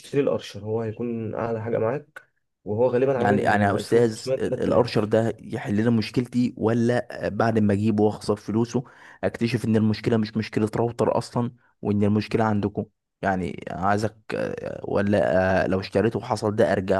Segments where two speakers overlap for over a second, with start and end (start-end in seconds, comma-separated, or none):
3.2-5.1